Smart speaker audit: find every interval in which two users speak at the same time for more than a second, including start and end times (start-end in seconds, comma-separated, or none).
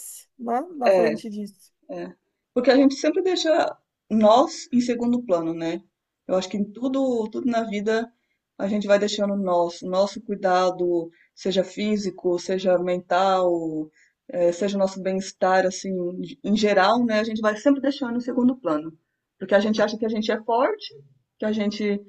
none